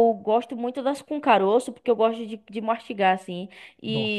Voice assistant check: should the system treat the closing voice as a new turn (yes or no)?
no